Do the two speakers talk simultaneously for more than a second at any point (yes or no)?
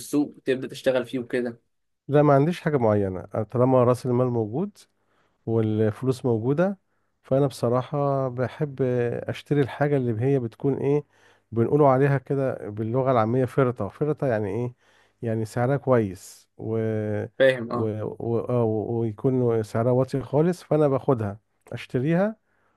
no